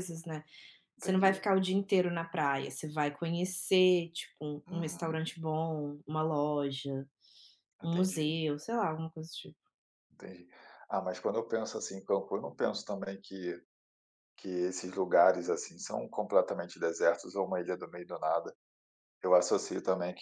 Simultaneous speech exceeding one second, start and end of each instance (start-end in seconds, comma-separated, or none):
none